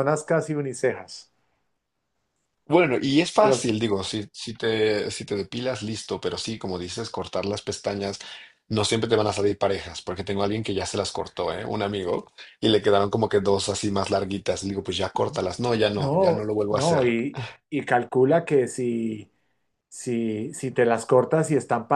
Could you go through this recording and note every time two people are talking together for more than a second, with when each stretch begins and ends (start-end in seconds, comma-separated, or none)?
15.9-17.1